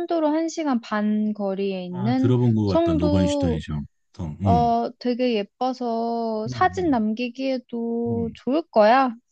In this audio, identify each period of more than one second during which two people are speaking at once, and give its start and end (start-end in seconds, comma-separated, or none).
1.9-3.6